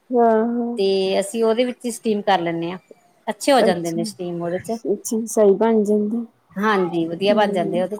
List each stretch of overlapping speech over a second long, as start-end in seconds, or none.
none